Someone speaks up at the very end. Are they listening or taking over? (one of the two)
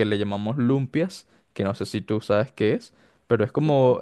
listening